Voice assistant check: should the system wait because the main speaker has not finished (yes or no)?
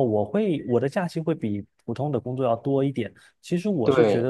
yes